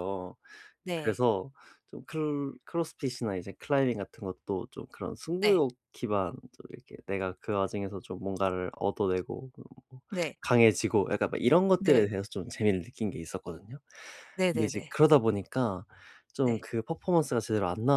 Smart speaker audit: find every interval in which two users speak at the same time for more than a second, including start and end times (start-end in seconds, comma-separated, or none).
none